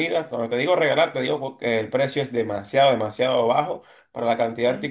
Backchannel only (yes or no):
yes